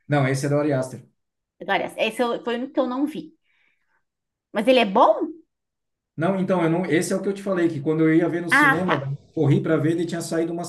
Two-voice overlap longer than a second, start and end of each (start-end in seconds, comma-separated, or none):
none